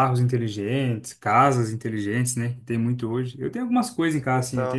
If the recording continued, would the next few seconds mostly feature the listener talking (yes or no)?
no